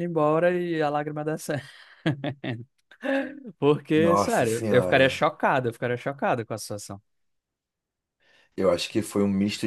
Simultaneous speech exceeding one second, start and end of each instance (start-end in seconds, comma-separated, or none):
4.0-5.2